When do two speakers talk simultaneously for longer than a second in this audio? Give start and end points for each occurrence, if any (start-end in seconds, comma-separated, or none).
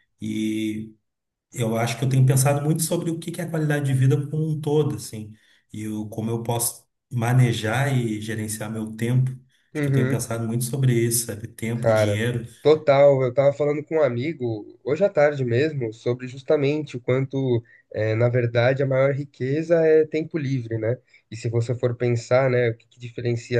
none